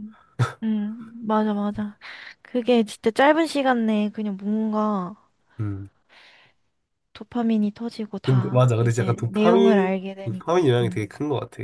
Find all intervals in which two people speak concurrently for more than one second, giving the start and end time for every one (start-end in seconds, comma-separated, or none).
8.2-11.0